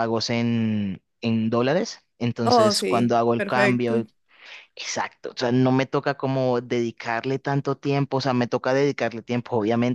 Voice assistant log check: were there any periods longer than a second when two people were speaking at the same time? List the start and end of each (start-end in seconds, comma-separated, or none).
2.4-4.0